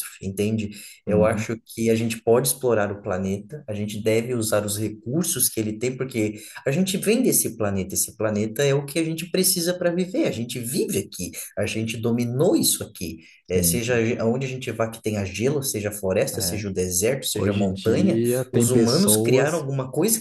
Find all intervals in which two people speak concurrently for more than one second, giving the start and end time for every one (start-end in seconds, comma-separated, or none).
17.3-19.6